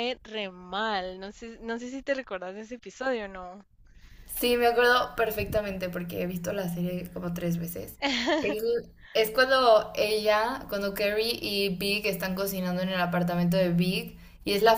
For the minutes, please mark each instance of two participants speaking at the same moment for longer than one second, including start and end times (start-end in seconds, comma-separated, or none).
none